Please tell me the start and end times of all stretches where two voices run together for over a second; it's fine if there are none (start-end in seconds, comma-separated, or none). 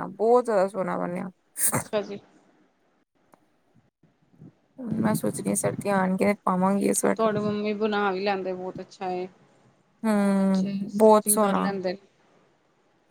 10.2-11.7